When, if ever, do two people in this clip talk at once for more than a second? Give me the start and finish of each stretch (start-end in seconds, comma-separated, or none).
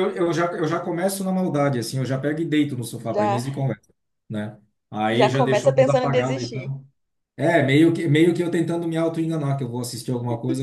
5.1-6.7